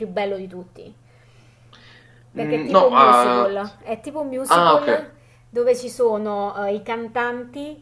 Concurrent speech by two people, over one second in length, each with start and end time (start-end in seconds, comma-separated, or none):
2.4-3.6